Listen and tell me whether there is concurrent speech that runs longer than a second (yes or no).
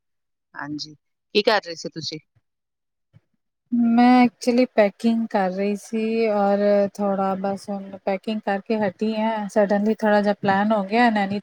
no